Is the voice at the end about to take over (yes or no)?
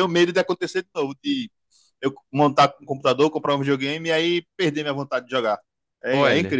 yes